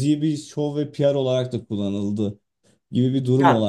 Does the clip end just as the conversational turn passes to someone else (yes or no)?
no